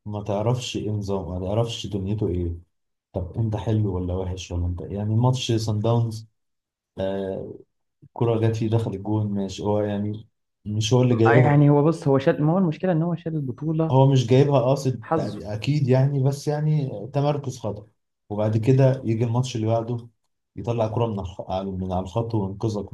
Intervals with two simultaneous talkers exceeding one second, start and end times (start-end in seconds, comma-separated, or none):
none